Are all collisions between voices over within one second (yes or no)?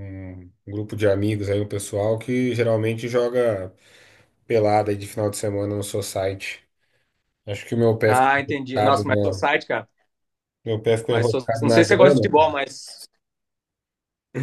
no